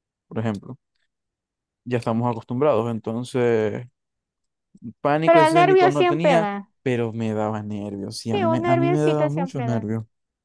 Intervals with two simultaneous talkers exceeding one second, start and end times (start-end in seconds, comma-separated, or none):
5.2-6.7, 8.3-9.9